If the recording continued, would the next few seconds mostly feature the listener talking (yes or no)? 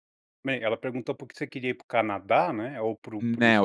yes